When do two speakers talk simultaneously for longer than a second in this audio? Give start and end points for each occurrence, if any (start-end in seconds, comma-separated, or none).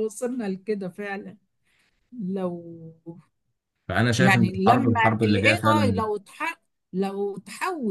4.2-6.0